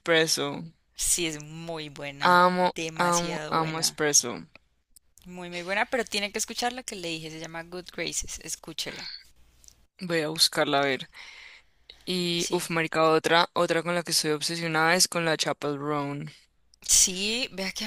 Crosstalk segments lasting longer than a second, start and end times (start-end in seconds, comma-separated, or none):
2.2-4.0